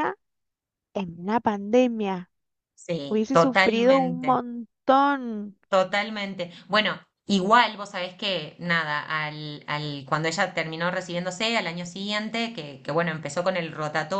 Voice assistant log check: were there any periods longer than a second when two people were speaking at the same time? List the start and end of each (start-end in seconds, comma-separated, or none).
3.1-4.4